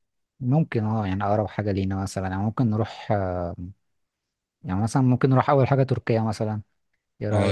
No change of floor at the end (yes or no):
no